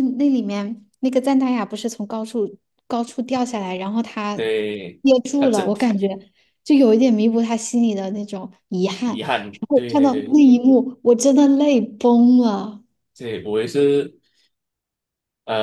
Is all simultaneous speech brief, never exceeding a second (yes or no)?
no